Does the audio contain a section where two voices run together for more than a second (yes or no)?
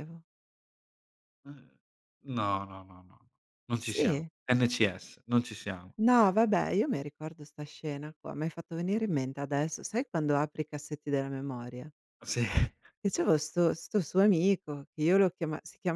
no